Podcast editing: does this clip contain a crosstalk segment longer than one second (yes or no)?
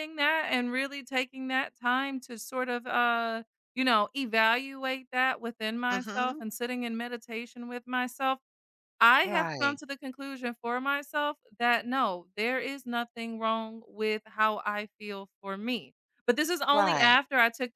no